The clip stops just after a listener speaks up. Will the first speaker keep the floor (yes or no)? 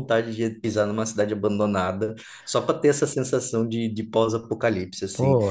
no